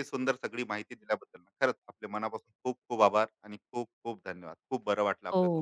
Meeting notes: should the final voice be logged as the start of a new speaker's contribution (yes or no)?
yes